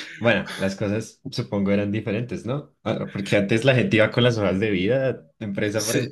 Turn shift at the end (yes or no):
yes